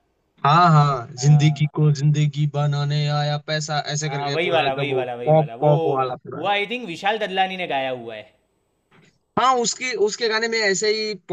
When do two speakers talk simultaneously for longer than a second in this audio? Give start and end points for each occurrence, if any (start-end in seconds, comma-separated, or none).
4.1-5.7